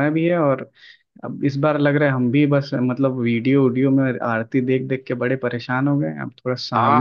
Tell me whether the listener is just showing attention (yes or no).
no